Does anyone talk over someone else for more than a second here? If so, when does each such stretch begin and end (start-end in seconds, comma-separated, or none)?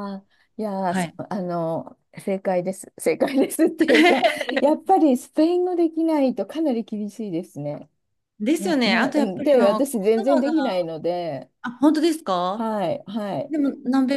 8.6-10.5